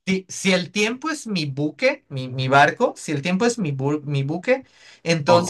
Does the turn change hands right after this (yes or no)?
no